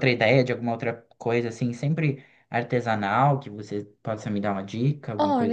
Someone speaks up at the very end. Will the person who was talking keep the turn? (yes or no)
no